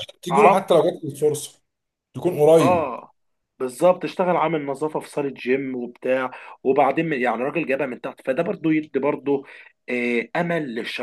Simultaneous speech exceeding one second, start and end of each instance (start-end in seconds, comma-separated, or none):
none